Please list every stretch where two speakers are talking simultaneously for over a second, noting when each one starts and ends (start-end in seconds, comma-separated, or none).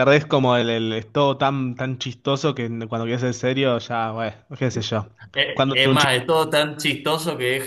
none